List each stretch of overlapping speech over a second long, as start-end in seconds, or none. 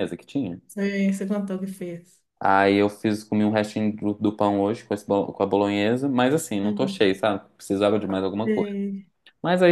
none